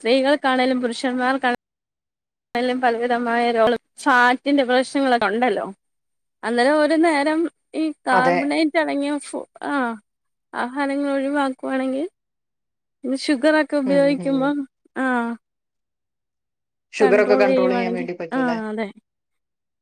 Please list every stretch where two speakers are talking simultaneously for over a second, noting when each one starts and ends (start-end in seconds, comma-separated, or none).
17.0-18.6